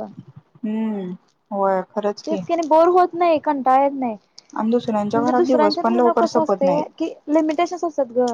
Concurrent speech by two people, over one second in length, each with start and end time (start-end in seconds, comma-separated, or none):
5.2-6.8